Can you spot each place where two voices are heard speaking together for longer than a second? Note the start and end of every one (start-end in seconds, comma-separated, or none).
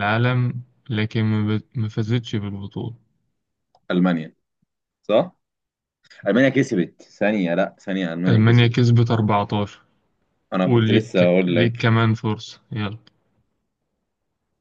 10.7-11.9